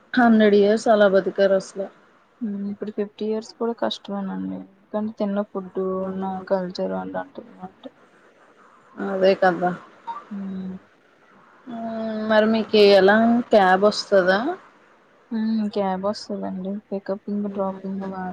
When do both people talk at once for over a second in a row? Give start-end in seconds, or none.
none